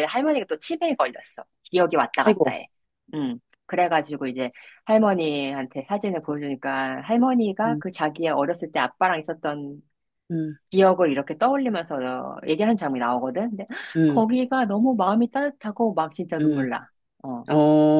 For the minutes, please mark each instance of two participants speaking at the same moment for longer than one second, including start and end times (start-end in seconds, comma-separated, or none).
none